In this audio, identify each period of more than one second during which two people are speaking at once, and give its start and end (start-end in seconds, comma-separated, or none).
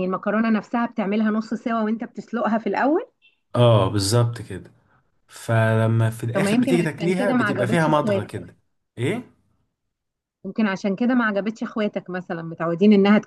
6.3-8.5